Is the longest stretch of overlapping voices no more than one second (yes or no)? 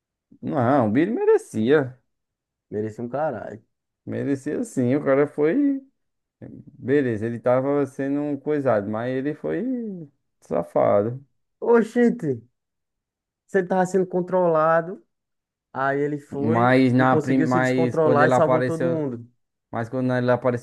no